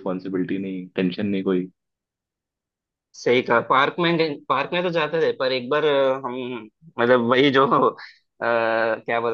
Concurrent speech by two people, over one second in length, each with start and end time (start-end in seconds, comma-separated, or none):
none